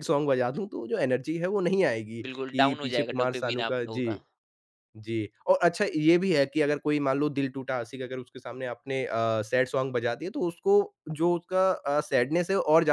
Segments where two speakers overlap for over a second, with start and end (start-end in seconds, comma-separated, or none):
2.3-4.1